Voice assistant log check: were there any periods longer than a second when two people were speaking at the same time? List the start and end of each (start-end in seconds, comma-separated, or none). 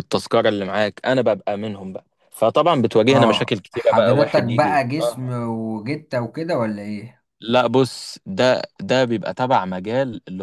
3.1-5.3